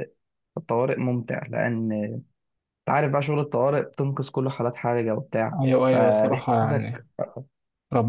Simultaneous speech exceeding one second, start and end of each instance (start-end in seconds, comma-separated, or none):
5.6-7.0